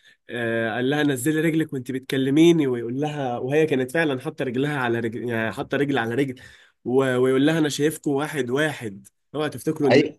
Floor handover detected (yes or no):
yes